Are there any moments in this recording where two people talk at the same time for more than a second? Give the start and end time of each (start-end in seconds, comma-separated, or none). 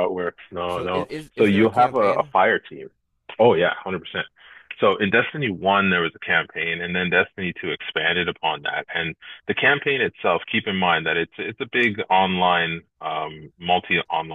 0.7-2.3